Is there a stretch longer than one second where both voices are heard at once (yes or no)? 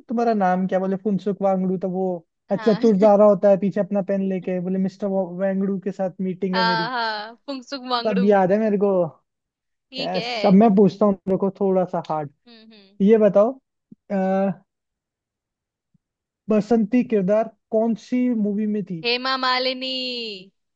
no